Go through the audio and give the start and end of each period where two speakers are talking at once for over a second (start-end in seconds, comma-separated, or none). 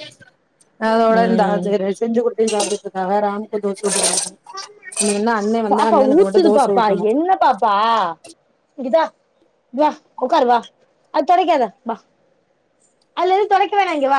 none